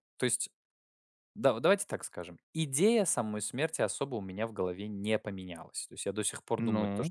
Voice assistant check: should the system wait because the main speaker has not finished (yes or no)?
yes